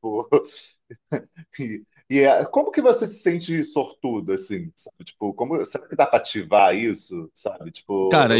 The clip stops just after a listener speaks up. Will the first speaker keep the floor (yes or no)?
no